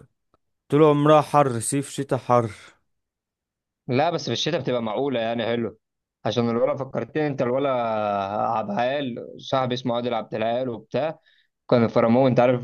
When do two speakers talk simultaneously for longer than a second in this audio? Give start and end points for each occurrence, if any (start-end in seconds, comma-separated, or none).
none